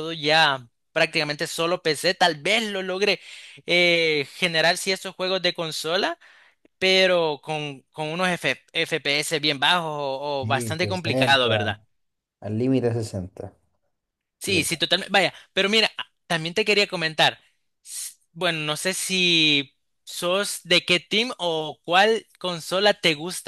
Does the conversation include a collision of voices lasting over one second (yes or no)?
yes